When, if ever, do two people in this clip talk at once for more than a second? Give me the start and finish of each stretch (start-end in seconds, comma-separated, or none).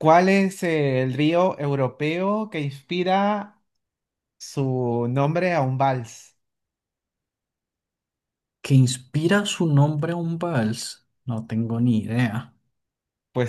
none